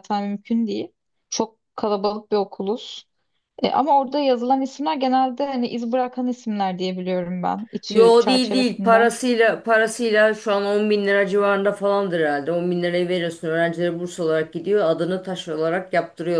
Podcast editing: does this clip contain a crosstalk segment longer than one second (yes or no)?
yes